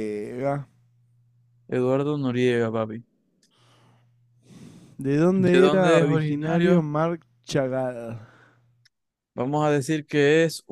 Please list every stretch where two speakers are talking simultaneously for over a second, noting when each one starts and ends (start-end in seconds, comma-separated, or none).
5.4-6.9